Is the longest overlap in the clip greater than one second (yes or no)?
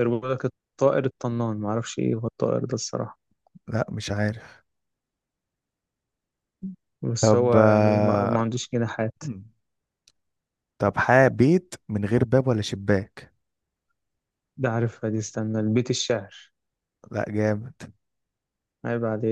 yes